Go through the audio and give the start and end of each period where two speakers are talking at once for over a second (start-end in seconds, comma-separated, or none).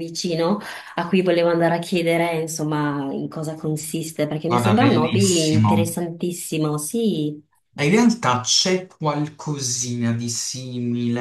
4.5-5.8